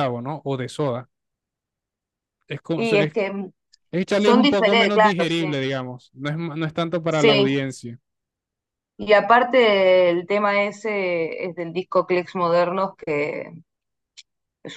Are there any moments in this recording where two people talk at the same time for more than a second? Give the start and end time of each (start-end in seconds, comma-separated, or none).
4.1-5.5